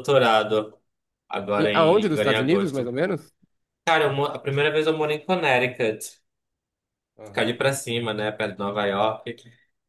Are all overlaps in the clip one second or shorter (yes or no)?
no